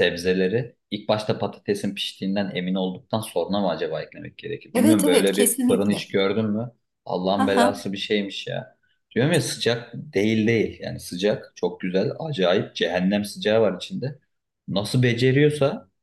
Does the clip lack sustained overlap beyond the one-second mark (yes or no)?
no